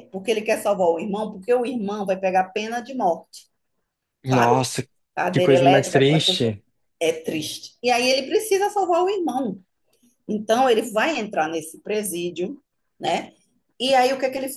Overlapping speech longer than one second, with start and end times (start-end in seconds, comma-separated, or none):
5.3-6.5